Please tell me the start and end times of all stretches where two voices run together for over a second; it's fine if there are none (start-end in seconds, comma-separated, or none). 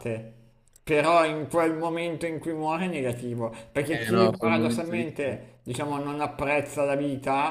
3.9-5.4